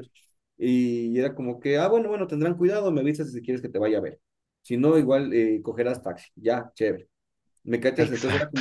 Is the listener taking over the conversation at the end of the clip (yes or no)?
no